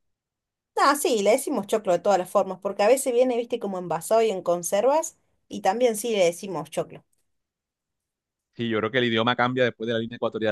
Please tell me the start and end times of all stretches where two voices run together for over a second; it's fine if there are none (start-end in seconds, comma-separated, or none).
none